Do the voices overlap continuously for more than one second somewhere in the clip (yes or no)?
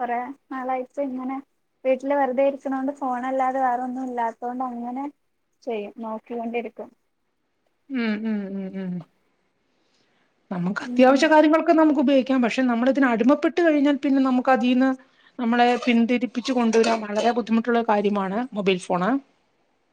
no